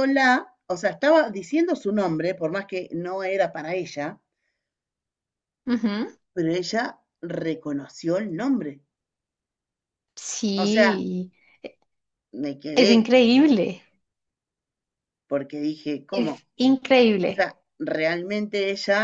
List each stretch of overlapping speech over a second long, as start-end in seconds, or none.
none